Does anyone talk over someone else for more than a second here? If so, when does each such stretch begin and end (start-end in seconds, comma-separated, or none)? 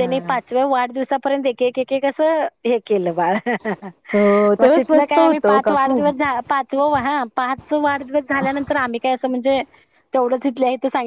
4.6-6.0